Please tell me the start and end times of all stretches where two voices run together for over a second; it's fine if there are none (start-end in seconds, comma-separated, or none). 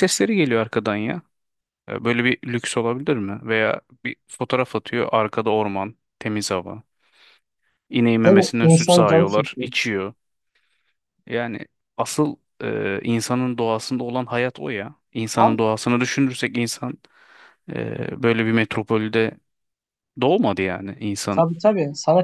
8.2-9.7